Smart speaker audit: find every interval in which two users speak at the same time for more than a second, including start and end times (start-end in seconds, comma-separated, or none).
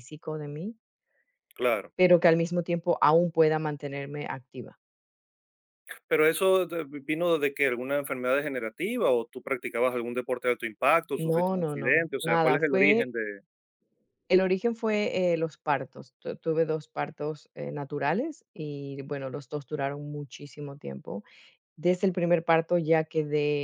11.2-13.1